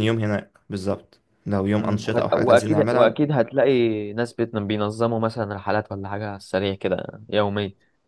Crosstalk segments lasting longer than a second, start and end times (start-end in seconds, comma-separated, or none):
1.8-3.1